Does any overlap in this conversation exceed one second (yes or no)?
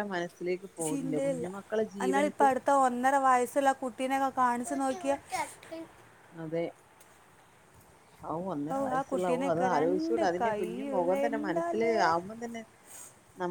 yes